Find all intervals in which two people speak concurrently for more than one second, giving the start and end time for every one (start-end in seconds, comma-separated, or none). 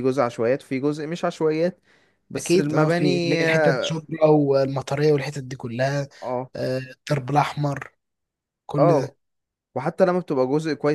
2.4-4.0